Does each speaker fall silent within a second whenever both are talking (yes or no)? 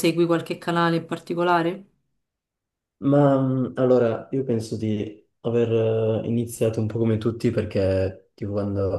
yes